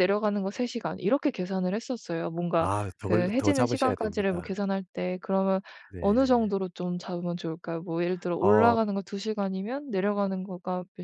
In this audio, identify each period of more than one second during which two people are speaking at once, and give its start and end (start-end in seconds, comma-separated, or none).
2.5-4.6